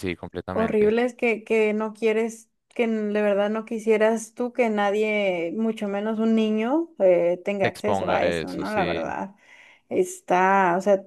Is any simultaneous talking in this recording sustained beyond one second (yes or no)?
yes